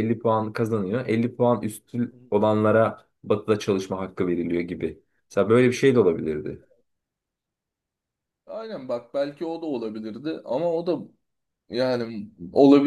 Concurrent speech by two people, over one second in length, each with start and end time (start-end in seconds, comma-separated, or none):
none